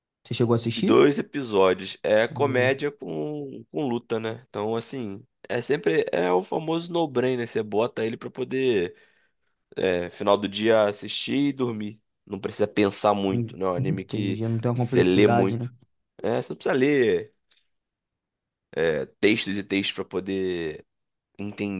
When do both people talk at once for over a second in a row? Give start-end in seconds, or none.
13.3-15.7